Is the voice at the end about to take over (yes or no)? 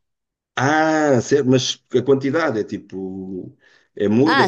yes